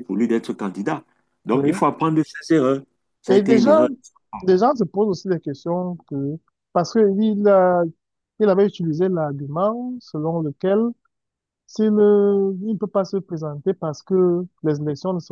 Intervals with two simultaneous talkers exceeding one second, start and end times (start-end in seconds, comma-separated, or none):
none